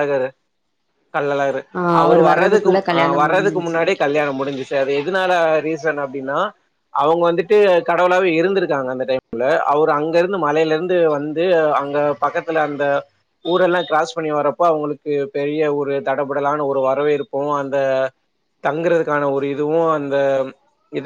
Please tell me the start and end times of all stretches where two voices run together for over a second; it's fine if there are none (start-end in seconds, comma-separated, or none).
2.0-3.8